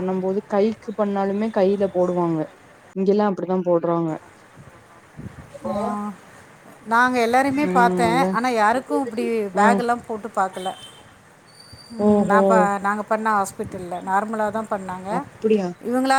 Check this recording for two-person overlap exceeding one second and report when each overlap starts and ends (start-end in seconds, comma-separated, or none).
none